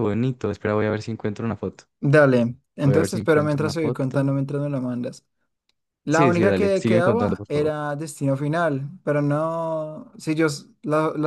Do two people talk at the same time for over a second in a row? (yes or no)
yes